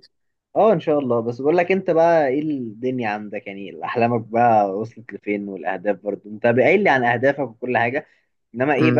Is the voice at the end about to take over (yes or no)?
no